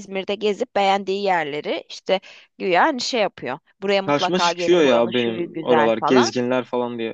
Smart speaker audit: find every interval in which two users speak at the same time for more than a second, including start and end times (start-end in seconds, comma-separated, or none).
4.1-6.3